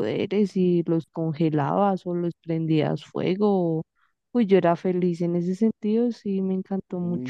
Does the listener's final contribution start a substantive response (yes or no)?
yes